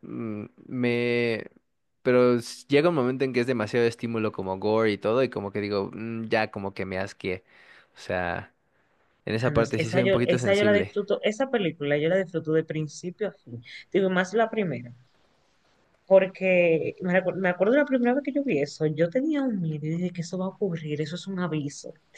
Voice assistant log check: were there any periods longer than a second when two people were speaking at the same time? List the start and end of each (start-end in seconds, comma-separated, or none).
9.5-10.9